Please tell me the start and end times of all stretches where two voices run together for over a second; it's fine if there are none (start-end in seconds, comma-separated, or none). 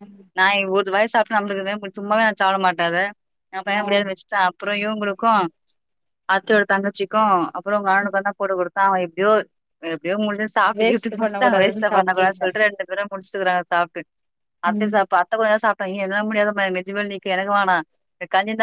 10.8-12.4